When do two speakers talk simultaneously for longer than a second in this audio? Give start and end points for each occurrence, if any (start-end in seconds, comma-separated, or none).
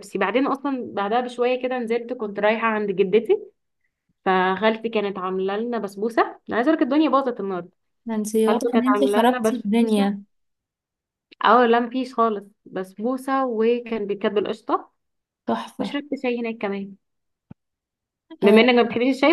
8.4-10.1